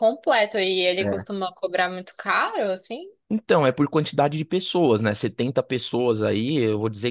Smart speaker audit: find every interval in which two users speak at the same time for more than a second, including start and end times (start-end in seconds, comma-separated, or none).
none